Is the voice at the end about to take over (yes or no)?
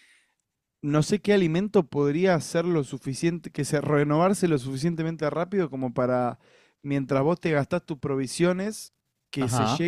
no